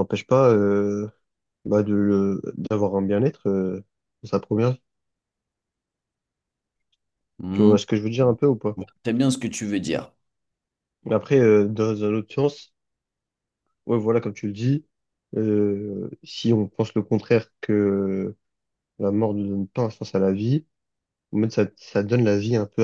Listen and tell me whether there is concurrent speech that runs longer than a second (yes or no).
no